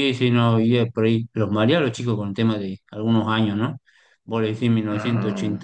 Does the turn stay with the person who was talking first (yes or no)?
yes